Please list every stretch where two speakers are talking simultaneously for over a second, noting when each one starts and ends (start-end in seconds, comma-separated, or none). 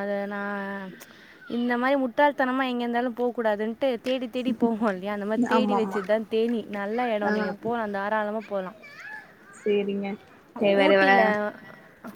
none